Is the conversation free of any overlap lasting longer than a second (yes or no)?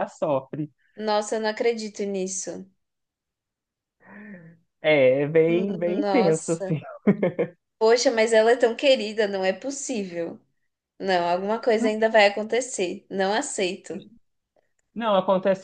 no